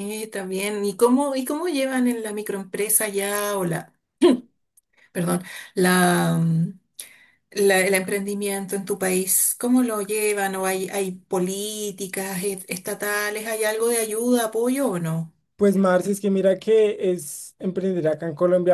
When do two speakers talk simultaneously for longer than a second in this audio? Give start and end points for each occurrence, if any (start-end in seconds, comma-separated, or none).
none